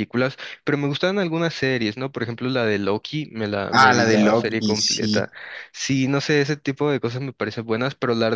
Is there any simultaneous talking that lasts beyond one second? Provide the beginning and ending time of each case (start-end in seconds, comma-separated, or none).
3.7-5.3